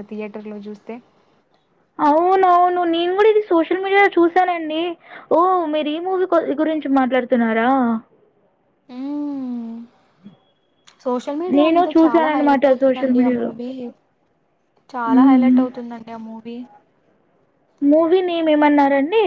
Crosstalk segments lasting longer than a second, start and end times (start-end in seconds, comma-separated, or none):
11.6-13.5